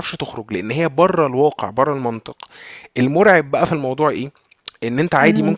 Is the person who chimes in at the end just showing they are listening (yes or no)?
yes